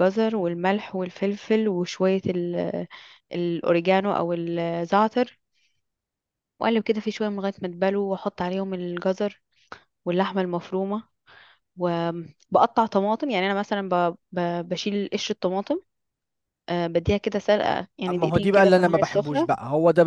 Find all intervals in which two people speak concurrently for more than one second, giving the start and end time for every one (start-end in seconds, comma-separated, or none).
18.1-19.5